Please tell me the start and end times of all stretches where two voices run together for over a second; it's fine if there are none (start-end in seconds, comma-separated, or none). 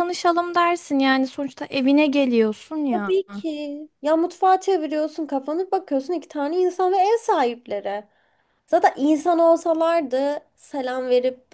none